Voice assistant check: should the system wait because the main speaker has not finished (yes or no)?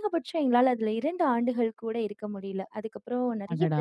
yes